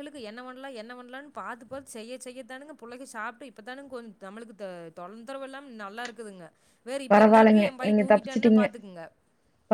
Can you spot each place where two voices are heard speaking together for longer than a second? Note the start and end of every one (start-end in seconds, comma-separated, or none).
7.1-8.7